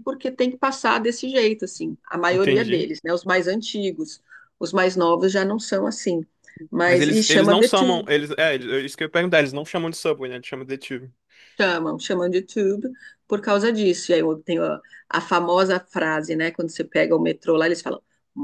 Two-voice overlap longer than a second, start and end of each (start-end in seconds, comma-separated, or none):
6.9-8.1